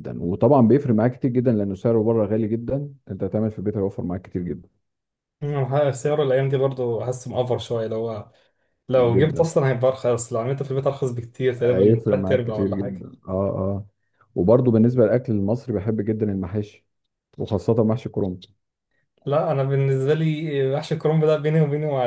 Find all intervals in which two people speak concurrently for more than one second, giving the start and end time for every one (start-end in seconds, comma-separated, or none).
11.6-13.1